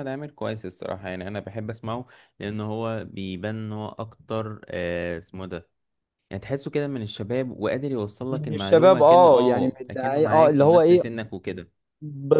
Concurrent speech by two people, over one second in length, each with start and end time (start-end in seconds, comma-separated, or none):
8.3-11.0